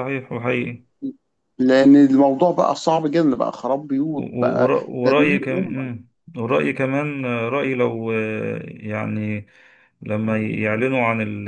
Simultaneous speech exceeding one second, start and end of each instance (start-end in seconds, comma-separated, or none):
4.2-5.9